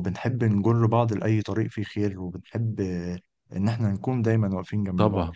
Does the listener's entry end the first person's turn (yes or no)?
no